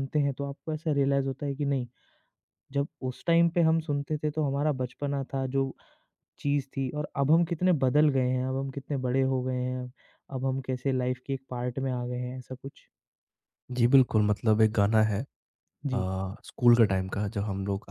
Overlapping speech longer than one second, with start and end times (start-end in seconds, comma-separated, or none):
none